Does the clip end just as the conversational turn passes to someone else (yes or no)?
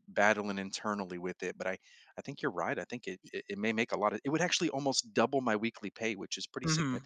yes